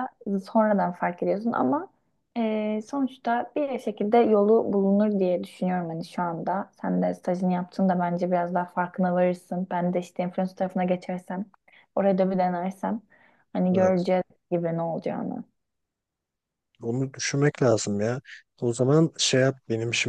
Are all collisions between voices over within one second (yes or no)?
yes